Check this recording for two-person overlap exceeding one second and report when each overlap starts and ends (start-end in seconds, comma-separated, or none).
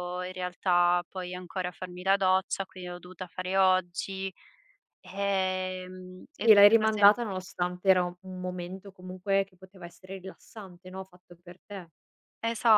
none